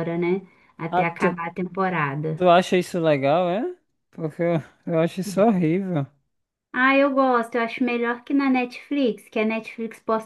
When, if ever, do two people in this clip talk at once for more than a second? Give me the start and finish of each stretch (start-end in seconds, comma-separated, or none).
none